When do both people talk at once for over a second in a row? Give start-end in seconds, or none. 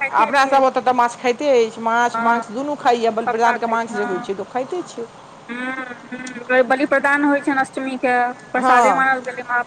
none